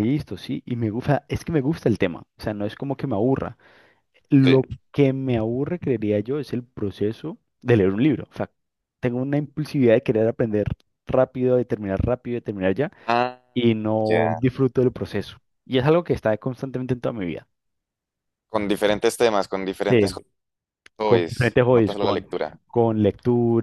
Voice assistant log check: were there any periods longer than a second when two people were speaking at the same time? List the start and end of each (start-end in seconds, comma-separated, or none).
21.0-22.2